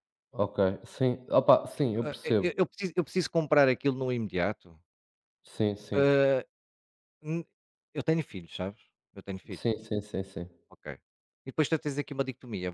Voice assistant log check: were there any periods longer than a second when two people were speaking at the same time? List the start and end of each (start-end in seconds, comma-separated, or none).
none